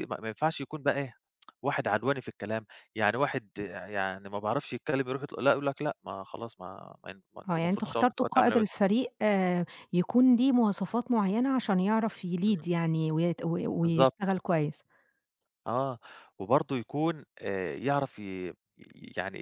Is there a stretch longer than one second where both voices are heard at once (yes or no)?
yes